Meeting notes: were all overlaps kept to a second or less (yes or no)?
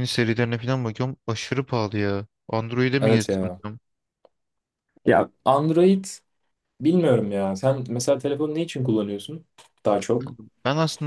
yes